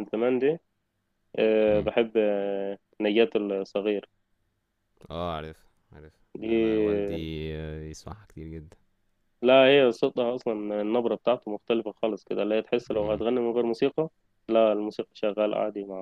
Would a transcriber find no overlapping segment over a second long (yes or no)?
yes